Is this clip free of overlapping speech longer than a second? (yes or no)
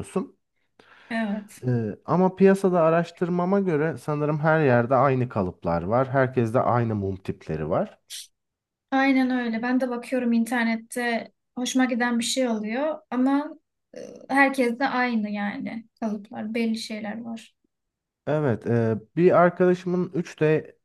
yes